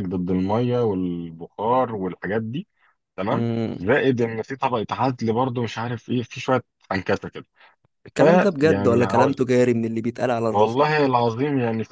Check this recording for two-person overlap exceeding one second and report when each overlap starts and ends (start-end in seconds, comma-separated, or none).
8.2-9.4